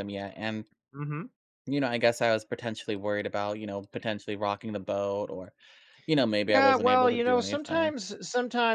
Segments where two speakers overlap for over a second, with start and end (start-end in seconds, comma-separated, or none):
6.5-7.9